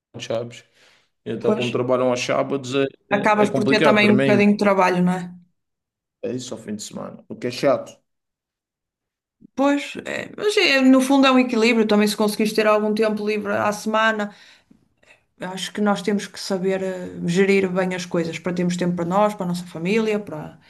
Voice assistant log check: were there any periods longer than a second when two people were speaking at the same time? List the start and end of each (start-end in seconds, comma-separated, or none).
3.2-4.5